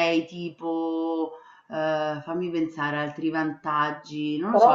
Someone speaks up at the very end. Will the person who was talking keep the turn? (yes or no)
no